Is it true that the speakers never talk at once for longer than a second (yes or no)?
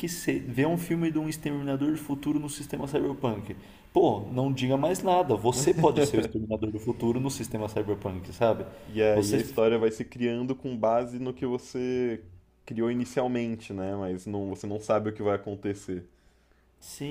yes